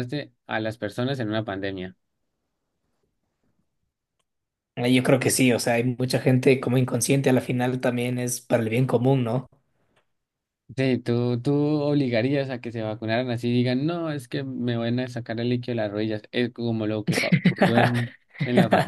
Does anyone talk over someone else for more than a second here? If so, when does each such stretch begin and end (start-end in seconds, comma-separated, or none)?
none